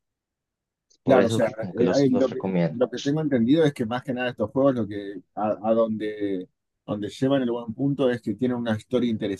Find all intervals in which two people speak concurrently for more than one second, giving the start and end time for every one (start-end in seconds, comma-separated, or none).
1.0-2.8